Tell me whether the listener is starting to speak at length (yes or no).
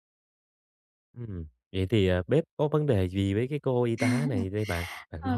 yes